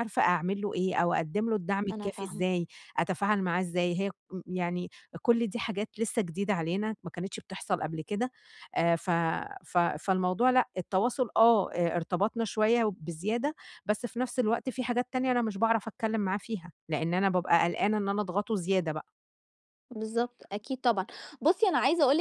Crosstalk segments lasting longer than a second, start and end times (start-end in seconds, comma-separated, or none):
none